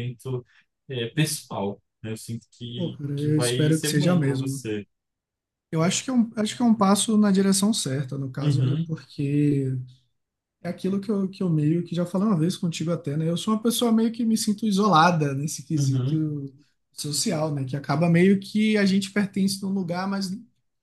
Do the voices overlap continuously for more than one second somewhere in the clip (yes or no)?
yes